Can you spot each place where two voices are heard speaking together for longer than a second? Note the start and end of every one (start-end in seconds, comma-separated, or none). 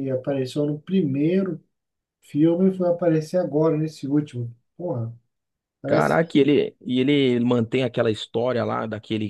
none